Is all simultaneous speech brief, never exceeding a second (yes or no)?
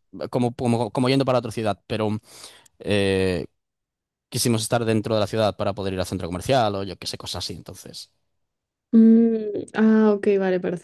yes